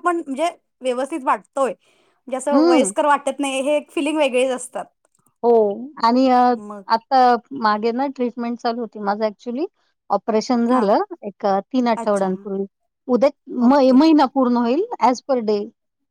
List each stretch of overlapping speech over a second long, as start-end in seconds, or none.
none